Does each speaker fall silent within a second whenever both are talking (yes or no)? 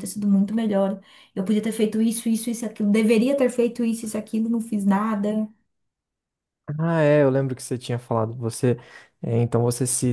yes